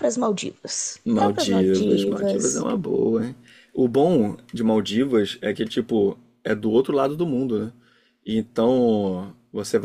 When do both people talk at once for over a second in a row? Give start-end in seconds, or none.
1.0-2.7